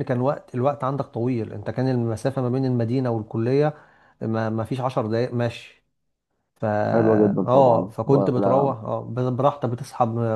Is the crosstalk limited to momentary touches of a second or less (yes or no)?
no